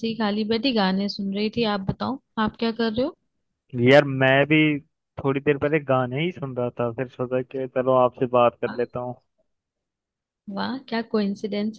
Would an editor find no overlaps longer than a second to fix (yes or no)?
yes